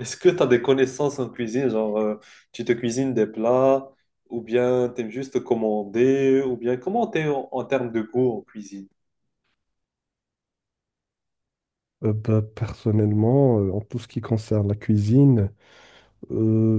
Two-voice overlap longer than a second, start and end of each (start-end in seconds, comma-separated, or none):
none